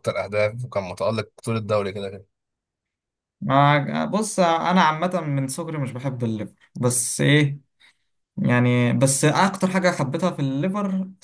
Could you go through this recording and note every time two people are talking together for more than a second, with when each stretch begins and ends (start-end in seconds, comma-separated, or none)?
none